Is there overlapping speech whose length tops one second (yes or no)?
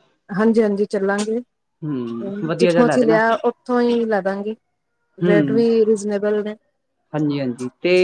yes